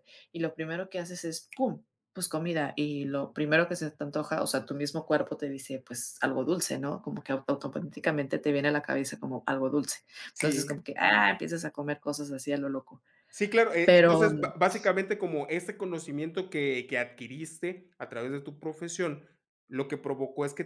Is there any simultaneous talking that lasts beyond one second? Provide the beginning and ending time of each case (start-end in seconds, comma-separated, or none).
none